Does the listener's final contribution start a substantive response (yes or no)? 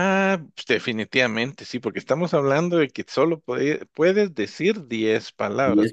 no